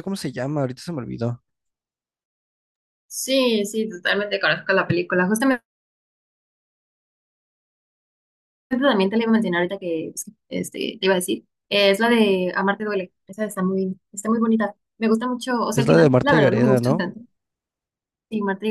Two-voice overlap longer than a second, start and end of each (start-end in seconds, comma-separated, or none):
15.7-17.1